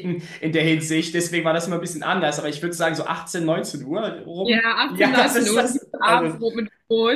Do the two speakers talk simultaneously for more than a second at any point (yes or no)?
yes